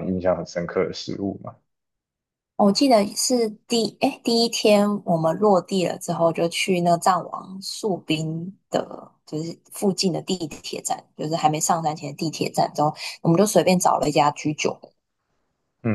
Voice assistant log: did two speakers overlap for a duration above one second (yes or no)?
no